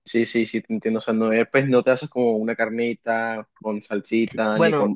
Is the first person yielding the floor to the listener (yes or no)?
yes